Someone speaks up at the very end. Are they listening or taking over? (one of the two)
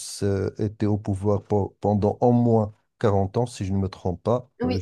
taking over